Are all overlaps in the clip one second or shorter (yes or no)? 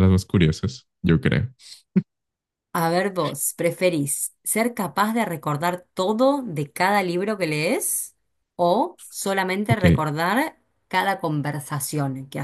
yes